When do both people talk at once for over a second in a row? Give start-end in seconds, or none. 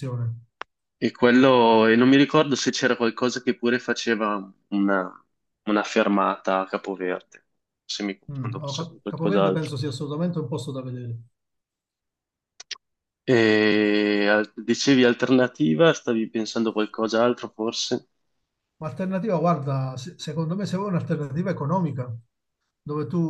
8.3-9.7